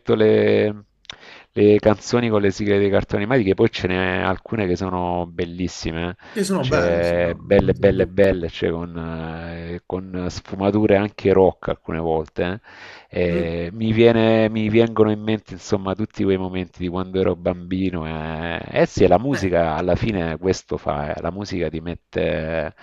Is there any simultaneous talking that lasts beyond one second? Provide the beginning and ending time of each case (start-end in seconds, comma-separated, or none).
6.3-8.4